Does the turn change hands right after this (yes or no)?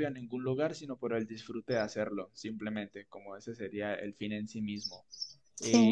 no